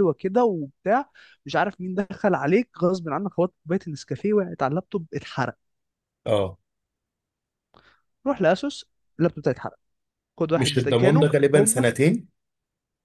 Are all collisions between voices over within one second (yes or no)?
no